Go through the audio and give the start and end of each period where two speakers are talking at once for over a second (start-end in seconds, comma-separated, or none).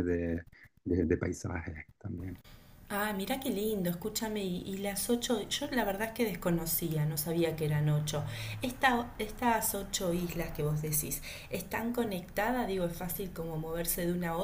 none